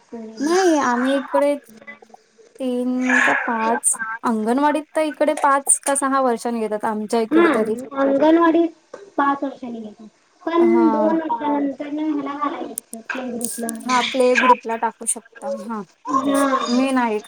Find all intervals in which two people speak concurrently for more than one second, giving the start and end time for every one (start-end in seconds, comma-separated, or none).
none